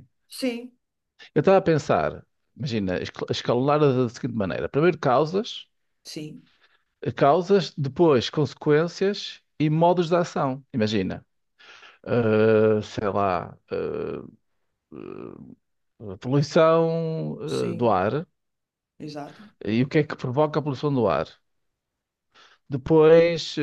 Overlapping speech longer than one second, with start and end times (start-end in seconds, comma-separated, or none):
none